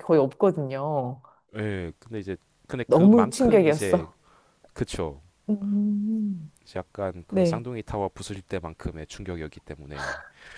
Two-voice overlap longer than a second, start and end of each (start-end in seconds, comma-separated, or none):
2.9-4.1